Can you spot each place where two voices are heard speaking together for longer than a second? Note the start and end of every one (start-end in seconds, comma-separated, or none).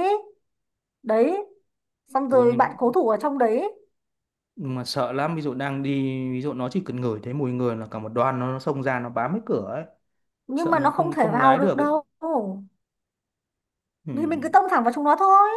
10.6-11.9